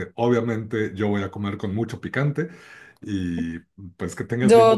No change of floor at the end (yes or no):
no